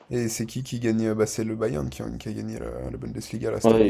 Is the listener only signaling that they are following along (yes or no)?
no